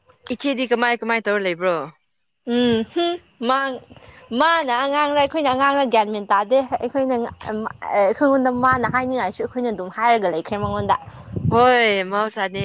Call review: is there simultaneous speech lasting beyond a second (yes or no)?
no